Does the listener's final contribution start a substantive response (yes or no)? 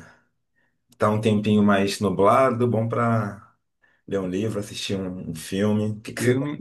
yes